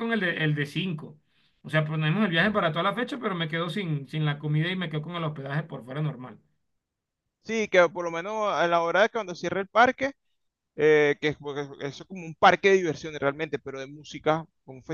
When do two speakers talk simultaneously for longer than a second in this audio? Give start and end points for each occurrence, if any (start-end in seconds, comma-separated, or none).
none